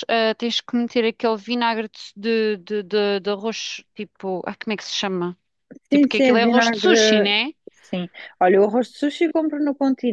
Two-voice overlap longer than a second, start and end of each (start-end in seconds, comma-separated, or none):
5.9-7.3